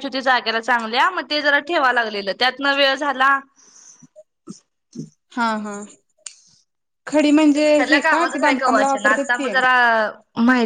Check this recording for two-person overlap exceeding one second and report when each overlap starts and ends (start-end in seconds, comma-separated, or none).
7.5-9.5